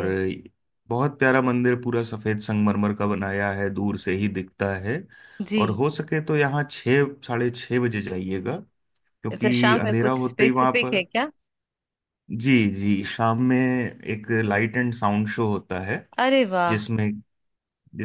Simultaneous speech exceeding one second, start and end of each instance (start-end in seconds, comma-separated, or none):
9.3-11.0